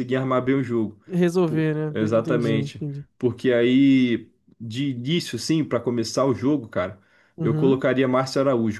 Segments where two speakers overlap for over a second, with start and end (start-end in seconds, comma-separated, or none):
1.4-3.1